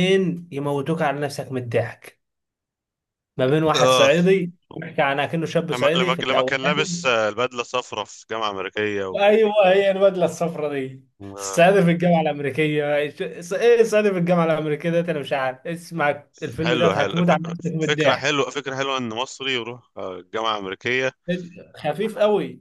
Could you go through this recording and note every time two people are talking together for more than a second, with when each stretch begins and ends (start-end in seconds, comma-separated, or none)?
5.7-7.1, 16.6-18.4